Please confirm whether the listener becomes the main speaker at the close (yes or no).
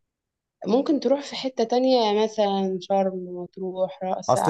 yes